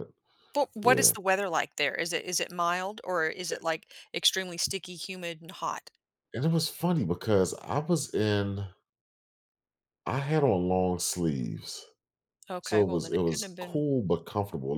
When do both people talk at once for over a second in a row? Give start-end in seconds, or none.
12.6-13.8